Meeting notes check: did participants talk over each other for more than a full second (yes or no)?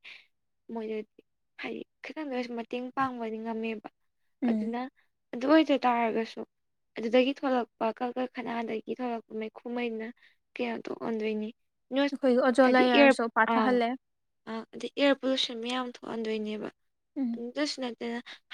no